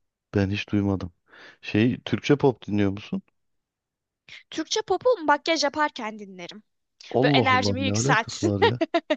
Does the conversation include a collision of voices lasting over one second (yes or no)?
yes